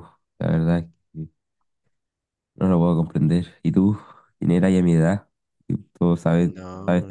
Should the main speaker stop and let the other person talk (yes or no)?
yes